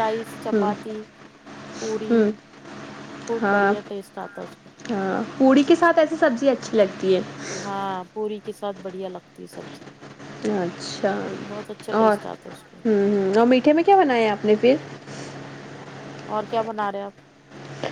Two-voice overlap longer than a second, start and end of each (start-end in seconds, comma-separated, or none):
none